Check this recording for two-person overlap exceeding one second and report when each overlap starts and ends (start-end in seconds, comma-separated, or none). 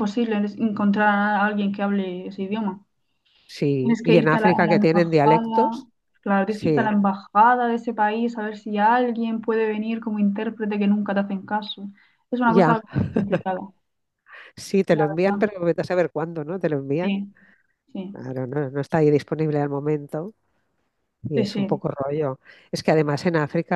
3.8-5.8